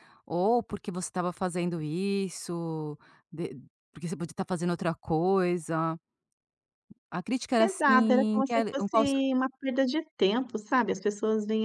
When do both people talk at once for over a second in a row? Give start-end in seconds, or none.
7.6-9.2